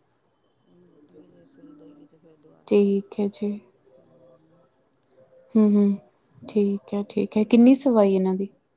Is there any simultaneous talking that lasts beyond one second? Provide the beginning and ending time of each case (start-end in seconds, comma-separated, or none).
none